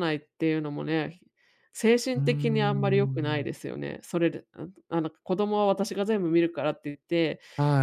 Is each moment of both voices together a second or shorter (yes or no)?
no